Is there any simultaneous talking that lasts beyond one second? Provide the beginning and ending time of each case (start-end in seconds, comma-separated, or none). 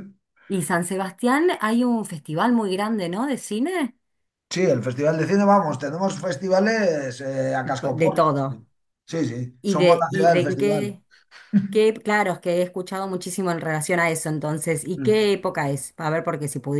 9.6-11.0